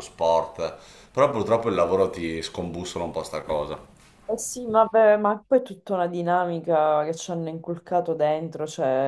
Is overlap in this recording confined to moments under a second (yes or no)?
yes